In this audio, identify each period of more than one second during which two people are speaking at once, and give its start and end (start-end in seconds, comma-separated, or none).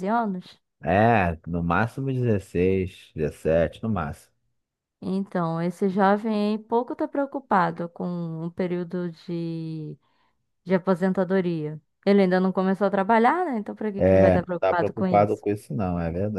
14.0-15.4